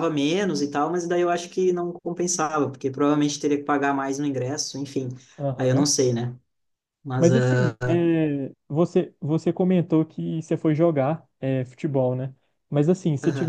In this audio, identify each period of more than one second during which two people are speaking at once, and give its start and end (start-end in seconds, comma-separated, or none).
none